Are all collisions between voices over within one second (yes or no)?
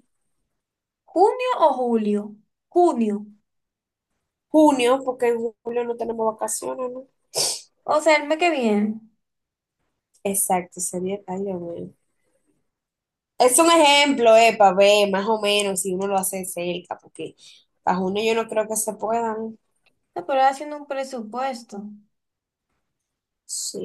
yes